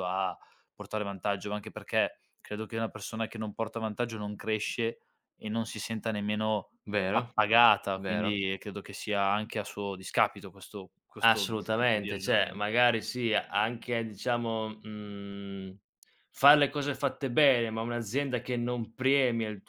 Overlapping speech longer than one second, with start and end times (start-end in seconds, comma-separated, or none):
11.2-12.6